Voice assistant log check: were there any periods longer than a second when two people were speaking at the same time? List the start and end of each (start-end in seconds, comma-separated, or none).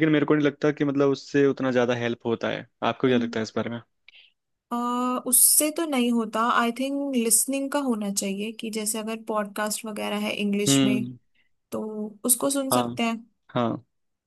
none